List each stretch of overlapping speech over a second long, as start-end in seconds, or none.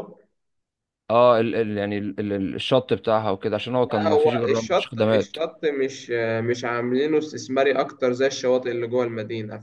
3.8-5.3